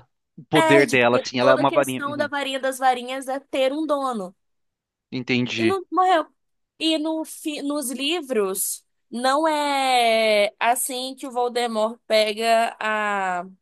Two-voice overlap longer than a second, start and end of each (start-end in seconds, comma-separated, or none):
0.5-2.3